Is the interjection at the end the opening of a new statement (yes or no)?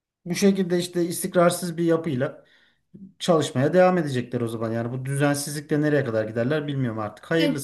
yes